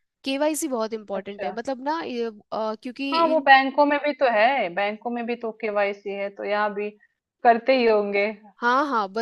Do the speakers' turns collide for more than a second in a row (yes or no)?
no